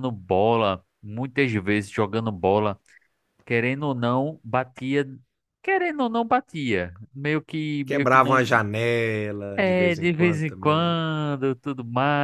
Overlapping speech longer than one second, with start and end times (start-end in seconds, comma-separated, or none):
9.6-10.9